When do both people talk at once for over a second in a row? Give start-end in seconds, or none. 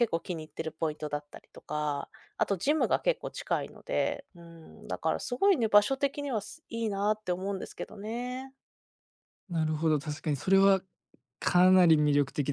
none